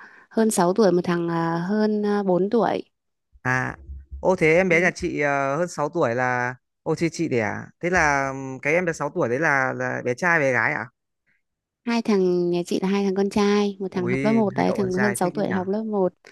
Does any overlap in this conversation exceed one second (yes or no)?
yes